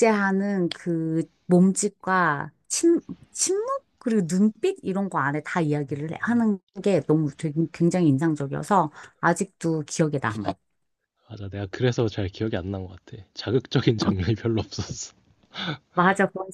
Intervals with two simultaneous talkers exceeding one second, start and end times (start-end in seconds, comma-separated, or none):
none